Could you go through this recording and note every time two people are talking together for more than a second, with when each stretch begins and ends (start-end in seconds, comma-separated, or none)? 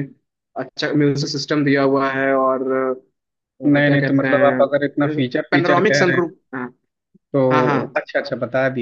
3.6-6.3